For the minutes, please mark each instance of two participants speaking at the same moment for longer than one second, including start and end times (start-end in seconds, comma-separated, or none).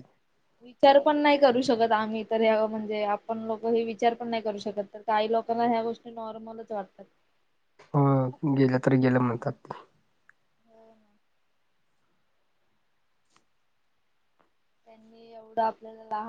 none